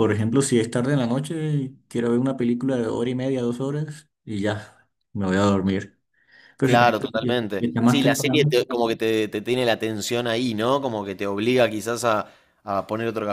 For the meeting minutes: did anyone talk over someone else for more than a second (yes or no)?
yes